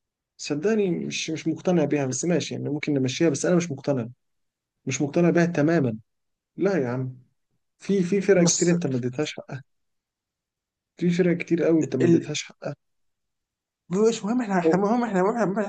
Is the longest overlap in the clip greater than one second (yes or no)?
no